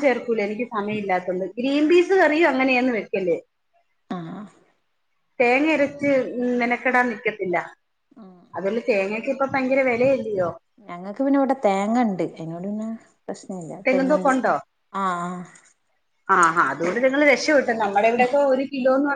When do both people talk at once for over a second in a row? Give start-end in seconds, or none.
none